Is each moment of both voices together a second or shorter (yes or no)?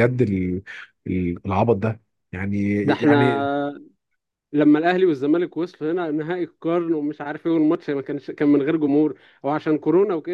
yes